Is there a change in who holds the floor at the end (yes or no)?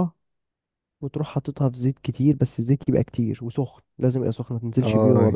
yes